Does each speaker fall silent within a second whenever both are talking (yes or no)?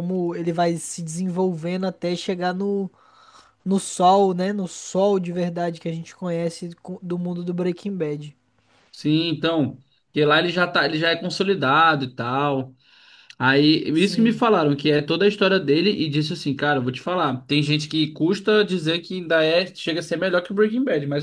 yes